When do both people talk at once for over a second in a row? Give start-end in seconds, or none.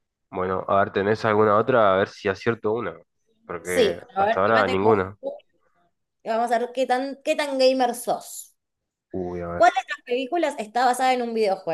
3.6-5.0